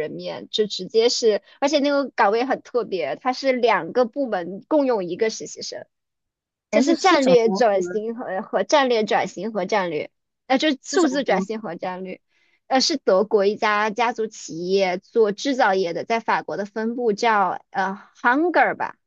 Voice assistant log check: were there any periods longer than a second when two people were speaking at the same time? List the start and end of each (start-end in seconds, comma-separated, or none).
6.7-8.0